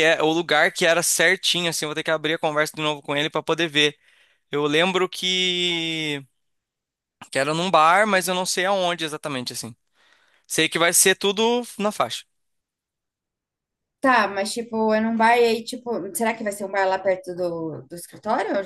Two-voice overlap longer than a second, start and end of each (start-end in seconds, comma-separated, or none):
none